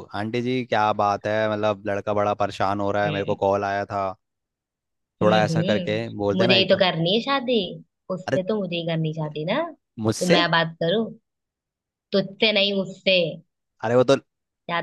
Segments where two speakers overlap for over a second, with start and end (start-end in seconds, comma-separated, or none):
5.2-6.8